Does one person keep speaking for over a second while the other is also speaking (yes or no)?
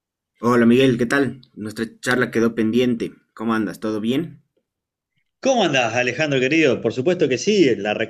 no